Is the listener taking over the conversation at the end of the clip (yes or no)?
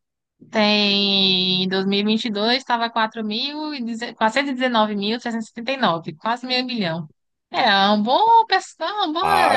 yes